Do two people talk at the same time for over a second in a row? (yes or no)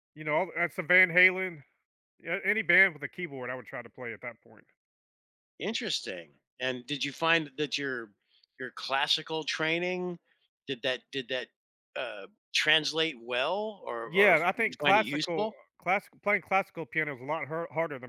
yes